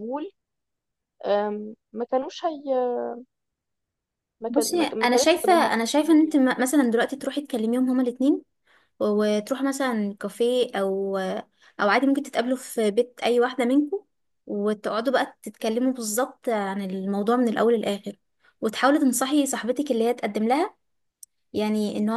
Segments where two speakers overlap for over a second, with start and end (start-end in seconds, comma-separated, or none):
4.5-6.4